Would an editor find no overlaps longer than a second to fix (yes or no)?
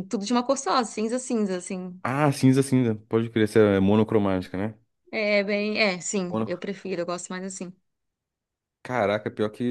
yes